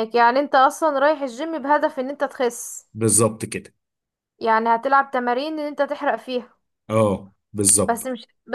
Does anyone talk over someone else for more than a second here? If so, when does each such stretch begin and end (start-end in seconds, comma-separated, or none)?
none